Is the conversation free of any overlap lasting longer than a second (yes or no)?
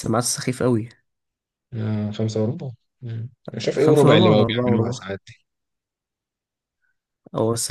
no